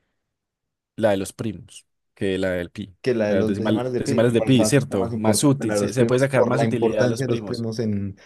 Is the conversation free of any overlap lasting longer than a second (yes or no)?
no